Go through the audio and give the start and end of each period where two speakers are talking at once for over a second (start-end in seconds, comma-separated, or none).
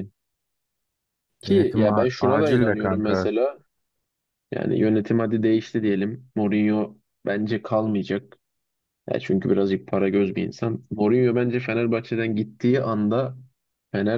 1.5-3.3